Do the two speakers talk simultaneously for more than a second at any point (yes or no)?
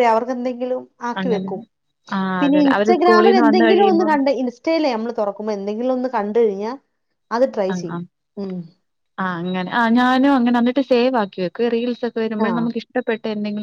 yes